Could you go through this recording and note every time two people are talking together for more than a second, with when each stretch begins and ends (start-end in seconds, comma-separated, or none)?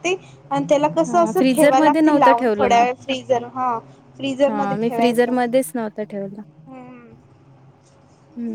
1.1-2.9